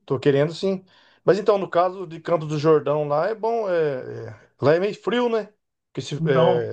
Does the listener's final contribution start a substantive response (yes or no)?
no